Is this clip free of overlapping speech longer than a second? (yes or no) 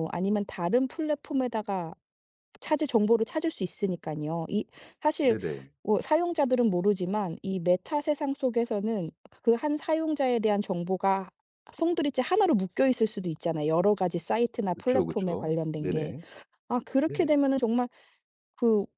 no